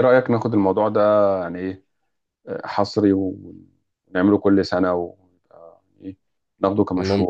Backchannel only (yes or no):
no